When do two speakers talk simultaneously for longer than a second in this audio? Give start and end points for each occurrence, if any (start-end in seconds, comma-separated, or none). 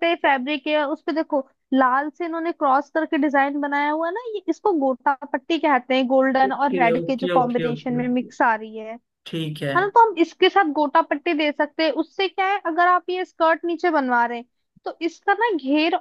6.5-8.3